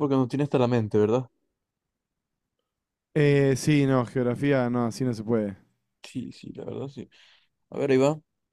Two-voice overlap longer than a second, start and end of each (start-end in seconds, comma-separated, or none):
none